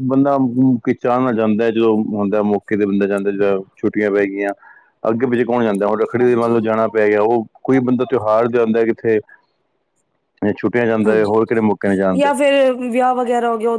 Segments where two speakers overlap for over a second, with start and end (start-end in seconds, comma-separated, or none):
11.1-12.3